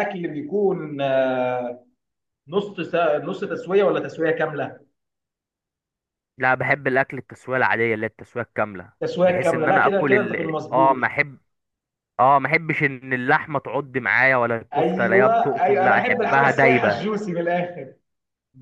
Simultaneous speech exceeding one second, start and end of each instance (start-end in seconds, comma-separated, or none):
9.0-11.0, 14.8-17.0